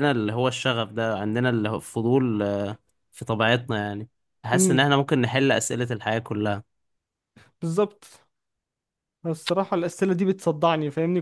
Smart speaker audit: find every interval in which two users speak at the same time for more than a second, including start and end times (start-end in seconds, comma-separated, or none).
none